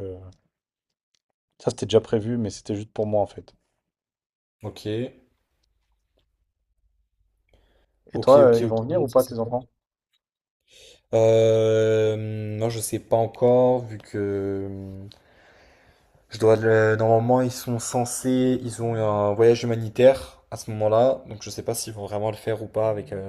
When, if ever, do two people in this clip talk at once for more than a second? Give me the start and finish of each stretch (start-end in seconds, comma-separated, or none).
8.2-9.5